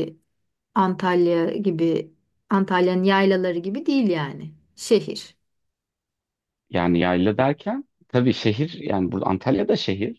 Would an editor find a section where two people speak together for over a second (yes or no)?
no